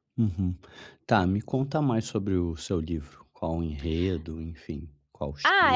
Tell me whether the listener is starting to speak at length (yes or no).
yes